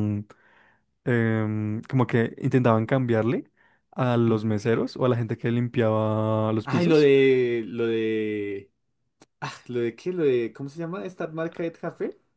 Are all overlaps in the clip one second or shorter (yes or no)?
yes